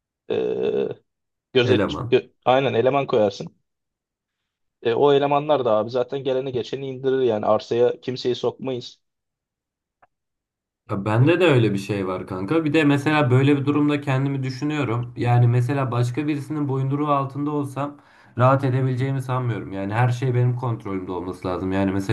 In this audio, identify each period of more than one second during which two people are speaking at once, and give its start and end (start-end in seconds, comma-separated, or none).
none